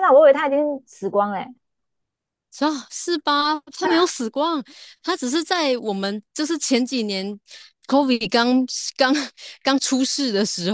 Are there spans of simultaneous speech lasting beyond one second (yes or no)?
no